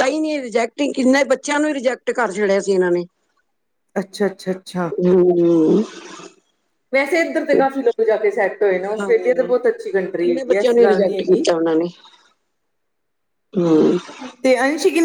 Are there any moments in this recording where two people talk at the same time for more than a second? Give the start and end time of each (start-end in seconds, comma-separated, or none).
10.2-11.4